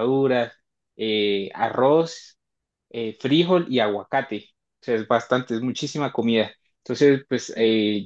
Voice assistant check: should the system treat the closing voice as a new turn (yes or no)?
no